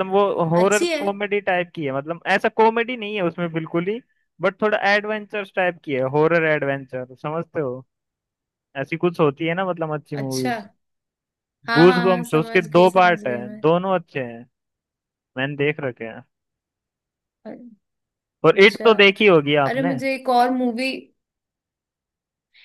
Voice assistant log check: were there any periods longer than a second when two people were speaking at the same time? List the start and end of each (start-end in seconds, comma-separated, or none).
11.8-13.6